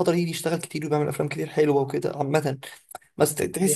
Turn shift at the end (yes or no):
no